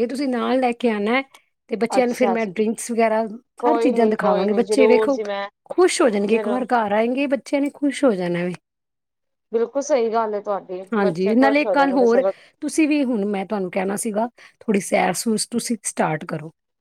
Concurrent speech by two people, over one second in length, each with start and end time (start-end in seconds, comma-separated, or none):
3.6-5.2, 10.9-12.2